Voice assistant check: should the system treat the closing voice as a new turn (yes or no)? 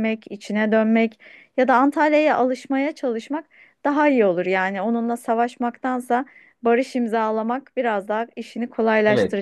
yes